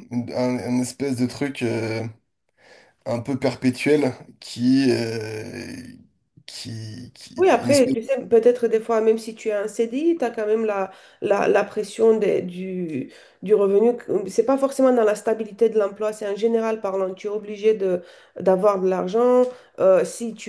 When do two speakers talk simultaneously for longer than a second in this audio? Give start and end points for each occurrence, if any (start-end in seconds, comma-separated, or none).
none